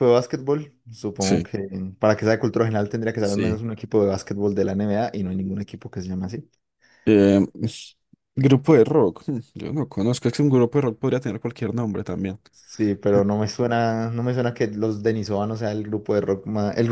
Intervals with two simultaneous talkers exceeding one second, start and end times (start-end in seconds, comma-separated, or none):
none